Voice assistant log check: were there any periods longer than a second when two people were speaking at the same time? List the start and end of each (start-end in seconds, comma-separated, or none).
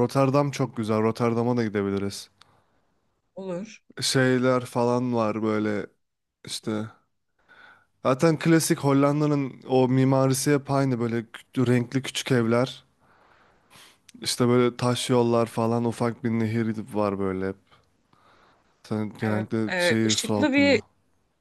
19.3-20.8